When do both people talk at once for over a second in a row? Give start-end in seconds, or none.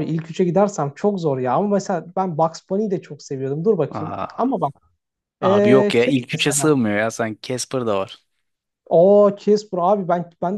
5.4-6.8